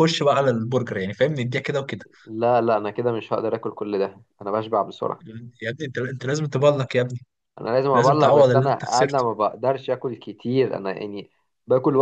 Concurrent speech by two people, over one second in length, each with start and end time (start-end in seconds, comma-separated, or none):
7.9-9.2